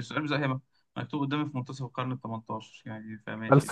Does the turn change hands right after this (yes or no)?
yes